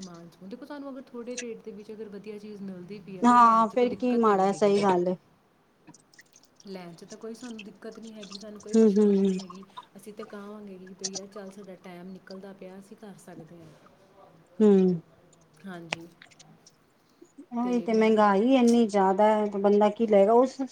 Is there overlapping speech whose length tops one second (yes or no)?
yes